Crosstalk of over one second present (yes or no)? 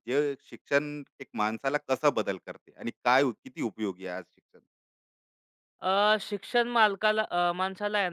no